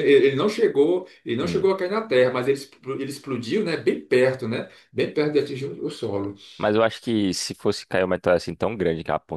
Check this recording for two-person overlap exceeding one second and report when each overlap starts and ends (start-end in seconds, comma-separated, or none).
none